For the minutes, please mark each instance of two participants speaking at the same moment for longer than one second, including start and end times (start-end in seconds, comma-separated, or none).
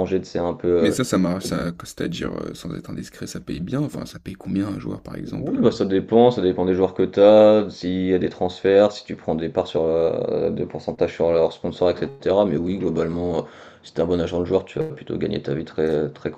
none